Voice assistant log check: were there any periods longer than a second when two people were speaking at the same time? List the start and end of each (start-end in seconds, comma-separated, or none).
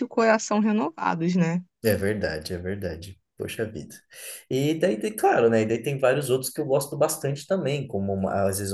none